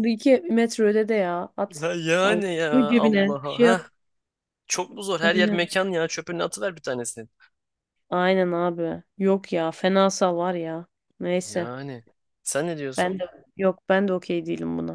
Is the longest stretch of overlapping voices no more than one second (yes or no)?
no